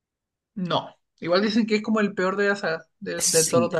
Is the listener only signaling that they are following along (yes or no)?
no